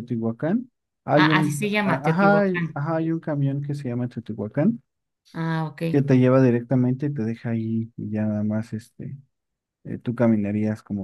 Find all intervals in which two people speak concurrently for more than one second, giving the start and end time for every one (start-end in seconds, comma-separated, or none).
1.1-2.8